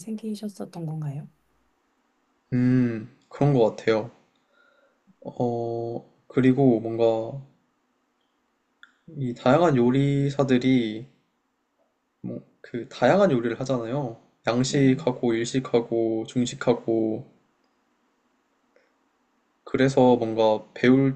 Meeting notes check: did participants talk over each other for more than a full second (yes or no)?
no